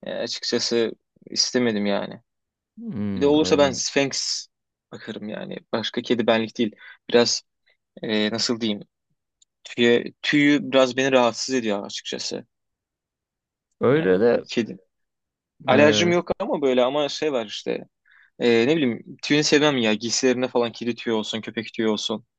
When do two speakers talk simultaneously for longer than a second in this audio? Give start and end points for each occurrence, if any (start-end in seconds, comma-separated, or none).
none